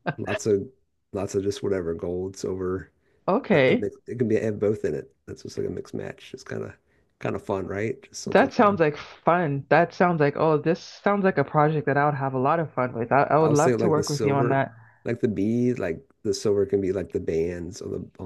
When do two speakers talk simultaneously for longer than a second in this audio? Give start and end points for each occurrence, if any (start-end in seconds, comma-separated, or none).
13.4-14.7